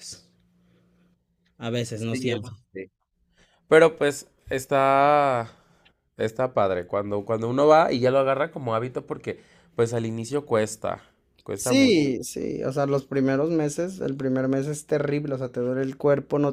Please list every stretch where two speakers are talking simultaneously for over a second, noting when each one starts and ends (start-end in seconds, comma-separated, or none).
none